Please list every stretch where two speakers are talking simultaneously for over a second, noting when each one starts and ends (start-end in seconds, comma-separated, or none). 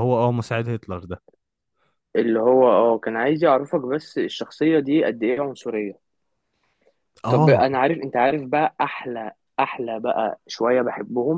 none